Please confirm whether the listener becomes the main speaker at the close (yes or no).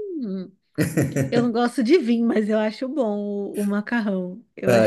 yes